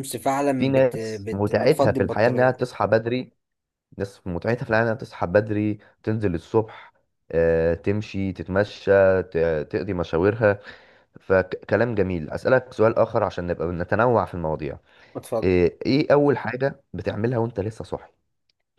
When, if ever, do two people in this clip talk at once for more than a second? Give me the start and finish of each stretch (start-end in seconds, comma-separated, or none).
0.6-2.7